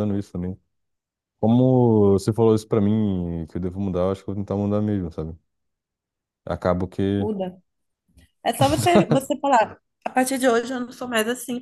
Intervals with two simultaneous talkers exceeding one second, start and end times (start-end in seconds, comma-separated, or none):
none